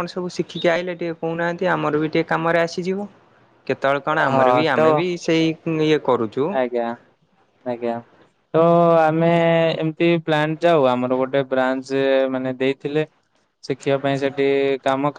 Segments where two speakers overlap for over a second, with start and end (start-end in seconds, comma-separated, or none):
none